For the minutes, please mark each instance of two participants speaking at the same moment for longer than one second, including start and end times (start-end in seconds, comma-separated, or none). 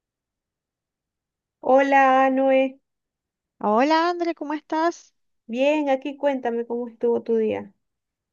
none